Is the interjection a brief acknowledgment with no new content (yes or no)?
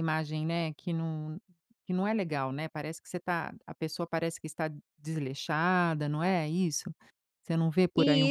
no